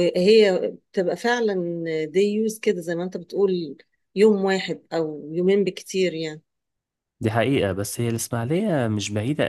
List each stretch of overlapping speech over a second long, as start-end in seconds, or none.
none